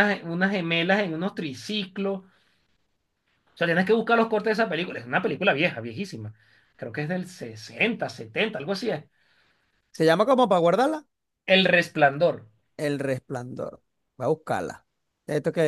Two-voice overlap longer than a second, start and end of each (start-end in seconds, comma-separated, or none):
none